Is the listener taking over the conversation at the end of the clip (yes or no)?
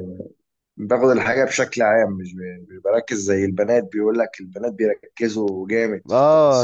yes